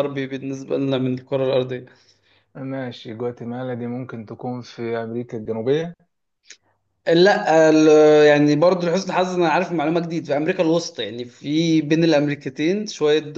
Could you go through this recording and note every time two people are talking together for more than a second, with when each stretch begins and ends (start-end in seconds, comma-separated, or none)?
none